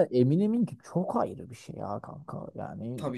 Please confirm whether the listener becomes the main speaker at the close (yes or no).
yes